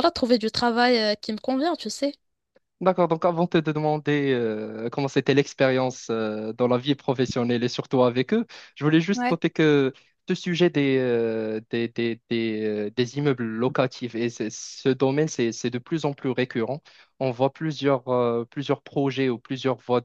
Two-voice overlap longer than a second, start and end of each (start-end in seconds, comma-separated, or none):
none